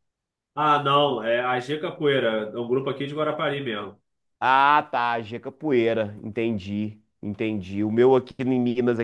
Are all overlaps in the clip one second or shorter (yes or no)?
yes